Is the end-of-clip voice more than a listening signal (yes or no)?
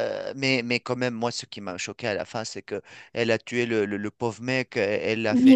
no